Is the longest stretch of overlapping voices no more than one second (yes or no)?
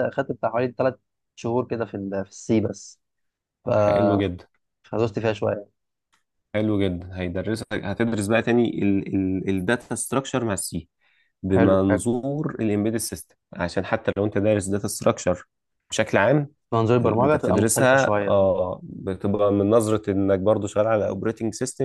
no